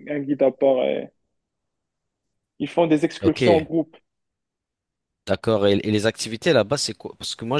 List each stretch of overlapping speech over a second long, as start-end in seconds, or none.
none